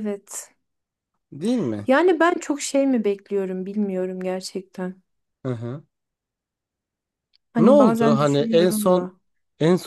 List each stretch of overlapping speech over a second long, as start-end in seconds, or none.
7.6-9.1